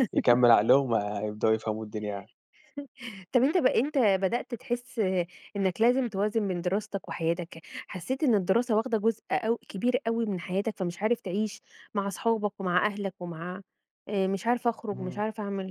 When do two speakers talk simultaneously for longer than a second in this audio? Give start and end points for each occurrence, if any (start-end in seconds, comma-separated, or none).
none